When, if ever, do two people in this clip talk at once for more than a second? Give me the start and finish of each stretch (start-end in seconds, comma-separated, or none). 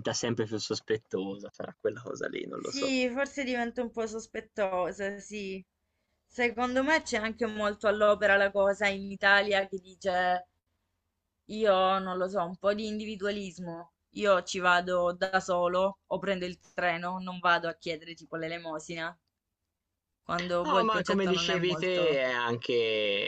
20.6-22.2